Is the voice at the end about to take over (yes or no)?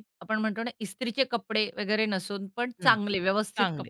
yes